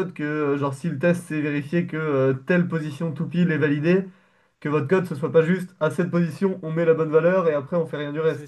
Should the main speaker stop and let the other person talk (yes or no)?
yes